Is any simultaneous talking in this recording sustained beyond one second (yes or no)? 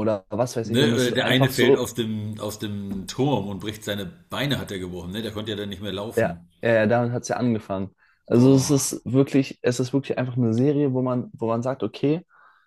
yes